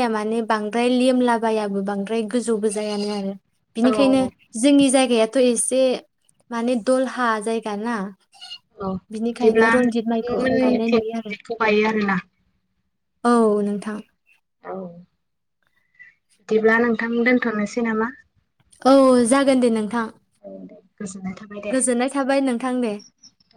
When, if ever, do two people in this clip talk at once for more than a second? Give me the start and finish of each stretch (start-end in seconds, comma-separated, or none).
9.3-11.3